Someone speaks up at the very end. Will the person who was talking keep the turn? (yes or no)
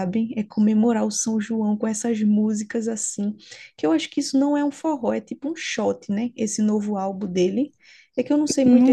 no